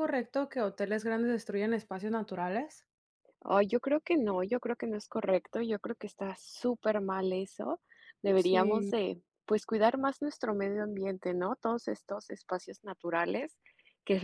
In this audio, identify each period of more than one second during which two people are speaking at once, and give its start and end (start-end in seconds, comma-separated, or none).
none